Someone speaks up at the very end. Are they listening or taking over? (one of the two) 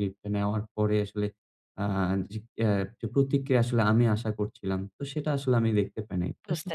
listening